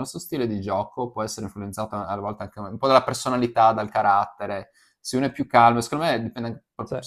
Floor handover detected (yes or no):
no